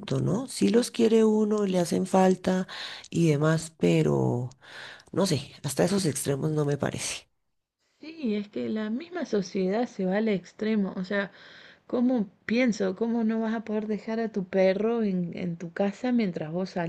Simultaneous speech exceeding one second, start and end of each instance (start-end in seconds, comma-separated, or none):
none